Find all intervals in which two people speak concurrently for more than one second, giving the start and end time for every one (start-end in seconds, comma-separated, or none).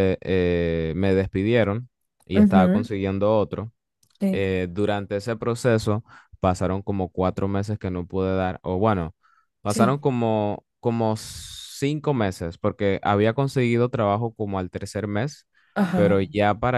none